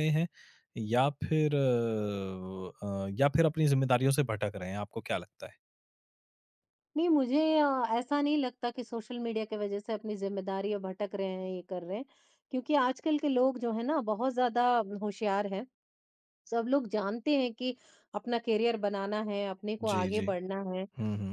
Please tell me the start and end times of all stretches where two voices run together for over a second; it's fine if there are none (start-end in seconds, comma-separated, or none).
none